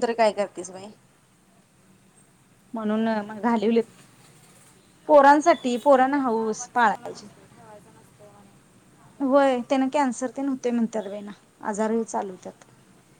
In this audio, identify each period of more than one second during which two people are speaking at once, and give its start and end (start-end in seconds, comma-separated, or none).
none